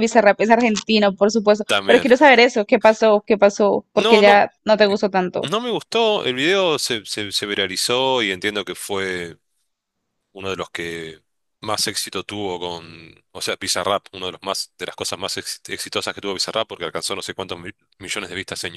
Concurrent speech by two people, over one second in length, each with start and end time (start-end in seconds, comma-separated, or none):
none